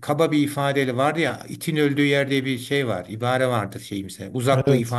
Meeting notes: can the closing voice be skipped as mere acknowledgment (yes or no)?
yes